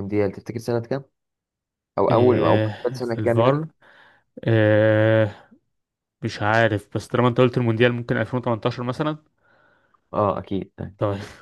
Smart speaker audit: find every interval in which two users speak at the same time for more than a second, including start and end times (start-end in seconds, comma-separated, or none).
2.1-3.6